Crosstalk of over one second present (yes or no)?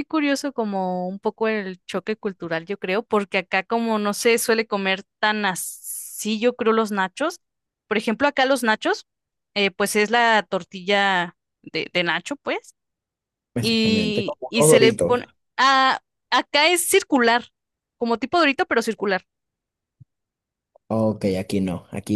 yes